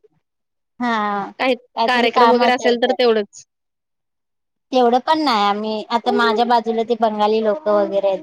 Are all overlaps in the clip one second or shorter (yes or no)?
no